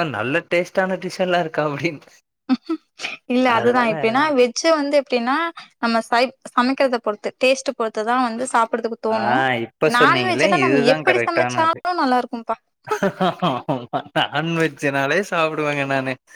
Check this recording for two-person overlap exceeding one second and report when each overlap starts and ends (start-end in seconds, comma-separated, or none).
10.0-11.8